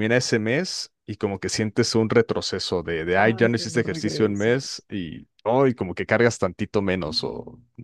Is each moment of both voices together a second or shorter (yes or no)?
no